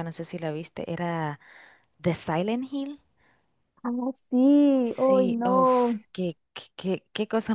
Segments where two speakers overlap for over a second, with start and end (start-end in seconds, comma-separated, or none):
4.8-6.0